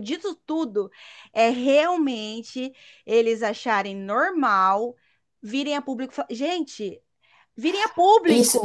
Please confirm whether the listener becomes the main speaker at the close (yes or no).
yes